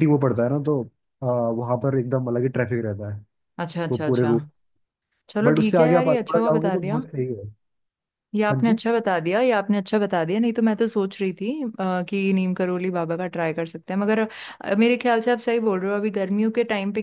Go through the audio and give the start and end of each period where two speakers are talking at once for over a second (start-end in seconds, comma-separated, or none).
5.4-7.0